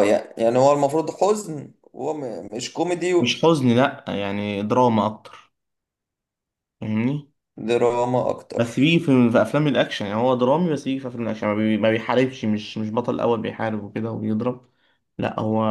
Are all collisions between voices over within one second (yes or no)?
yes